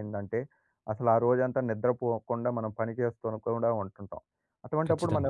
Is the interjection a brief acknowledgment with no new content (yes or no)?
yes